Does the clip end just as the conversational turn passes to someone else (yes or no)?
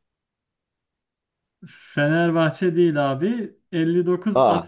no